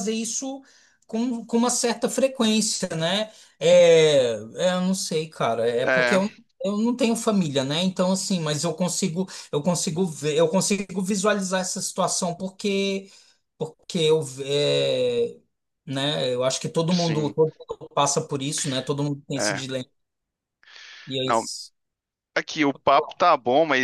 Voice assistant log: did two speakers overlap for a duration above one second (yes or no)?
no